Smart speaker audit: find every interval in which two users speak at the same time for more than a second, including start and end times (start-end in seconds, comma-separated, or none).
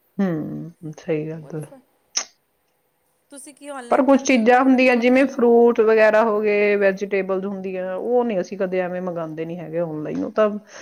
3.9-5.3